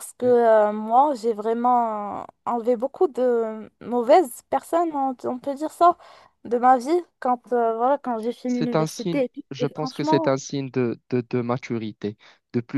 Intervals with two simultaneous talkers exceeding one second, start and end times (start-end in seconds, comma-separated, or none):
8.5-10.3